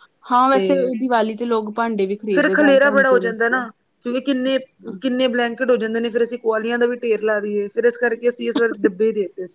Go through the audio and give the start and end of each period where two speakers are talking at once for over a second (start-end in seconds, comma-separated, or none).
2.4-3.6